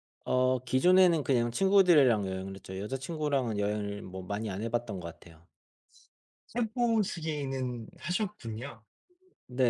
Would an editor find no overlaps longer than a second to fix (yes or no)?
yes